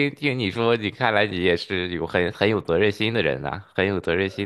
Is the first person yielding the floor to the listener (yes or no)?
yes